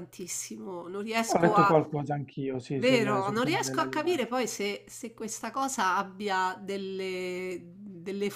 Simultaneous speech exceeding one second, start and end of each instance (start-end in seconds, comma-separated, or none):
2.8-4.2